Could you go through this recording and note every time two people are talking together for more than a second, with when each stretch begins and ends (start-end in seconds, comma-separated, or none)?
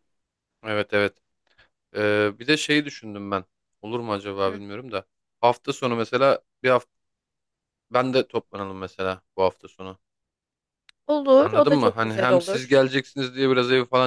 11.4-12.8